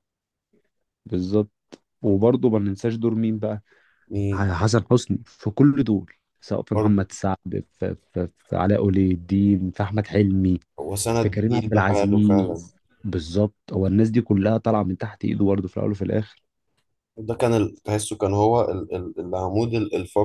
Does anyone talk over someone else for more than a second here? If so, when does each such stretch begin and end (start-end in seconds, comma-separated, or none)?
11.2-12.6